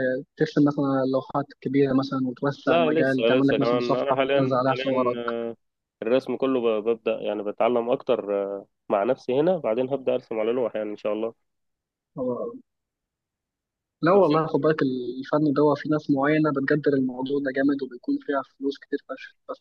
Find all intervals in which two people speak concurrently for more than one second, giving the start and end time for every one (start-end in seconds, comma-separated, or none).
2.7-5.2